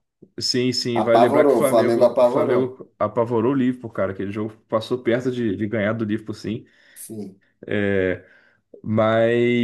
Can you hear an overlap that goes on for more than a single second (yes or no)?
yes